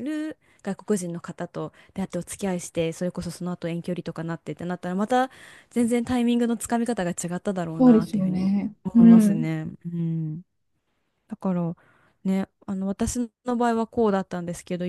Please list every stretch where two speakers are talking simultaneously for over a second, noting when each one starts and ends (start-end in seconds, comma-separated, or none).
7.8-9.5